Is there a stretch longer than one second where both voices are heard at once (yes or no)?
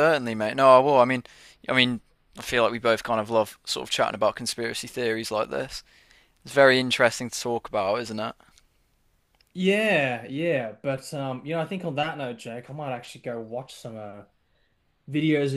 no